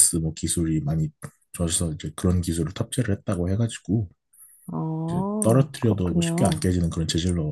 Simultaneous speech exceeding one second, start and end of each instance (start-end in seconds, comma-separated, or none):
5.1-6.7